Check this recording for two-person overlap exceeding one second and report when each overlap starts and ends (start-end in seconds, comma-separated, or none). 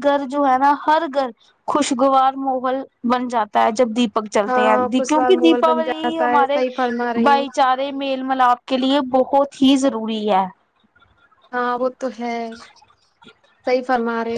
4.5-6.6